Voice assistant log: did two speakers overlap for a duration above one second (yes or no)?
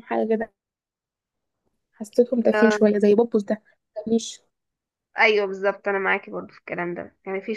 no